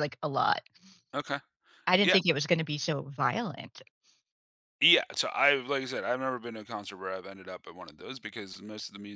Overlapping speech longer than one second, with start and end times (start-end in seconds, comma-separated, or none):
none